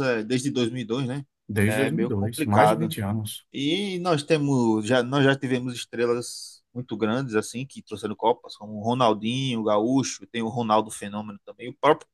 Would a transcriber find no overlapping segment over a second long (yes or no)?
no